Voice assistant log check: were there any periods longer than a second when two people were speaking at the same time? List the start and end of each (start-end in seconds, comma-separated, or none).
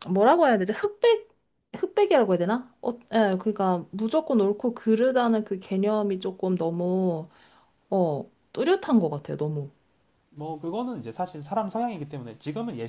none